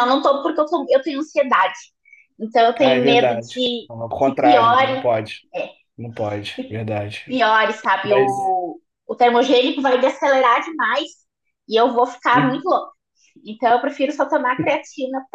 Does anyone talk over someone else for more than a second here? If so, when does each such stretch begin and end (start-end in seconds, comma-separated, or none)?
2.8-5.0